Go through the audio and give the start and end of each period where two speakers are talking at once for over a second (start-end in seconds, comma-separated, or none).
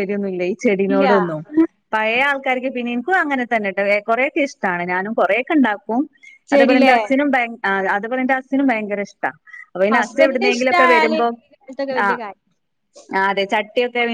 9.9-11.3